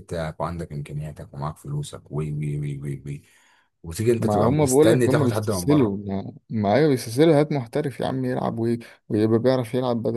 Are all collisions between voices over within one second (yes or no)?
no